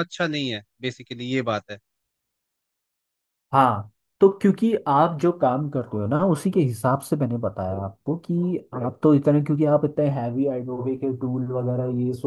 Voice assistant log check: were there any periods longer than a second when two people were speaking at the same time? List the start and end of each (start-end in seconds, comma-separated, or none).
none